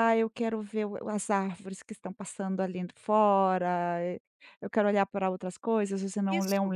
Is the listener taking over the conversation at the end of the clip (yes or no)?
no